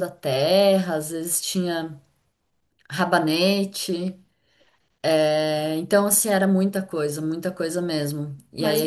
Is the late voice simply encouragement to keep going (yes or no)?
yes